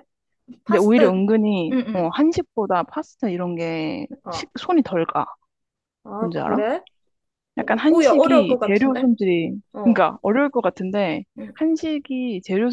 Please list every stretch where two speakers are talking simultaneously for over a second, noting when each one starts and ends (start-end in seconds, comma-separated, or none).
7.9-9.1